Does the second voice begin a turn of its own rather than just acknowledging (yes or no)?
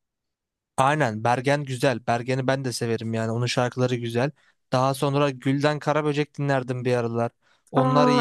yes